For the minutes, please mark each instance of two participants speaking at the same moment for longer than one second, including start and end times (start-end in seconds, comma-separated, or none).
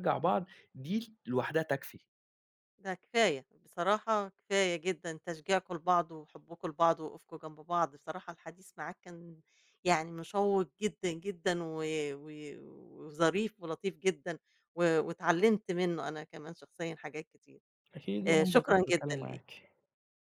18.3-19.6